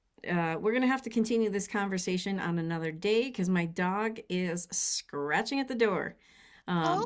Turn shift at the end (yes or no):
yes